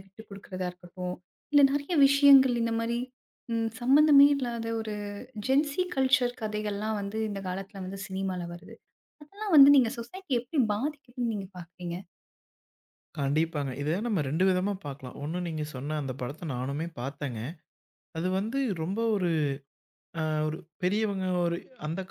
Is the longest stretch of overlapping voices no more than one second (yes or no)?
yes